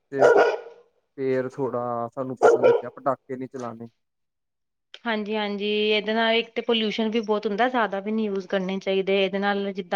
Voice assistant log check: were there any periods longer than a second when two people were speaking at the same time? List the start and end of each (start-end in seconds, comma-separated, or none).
none